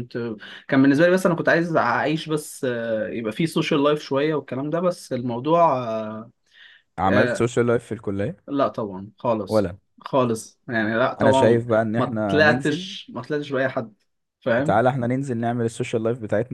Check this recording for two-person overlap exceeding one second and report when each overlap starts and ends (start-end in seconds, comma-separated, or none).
11.2-12.9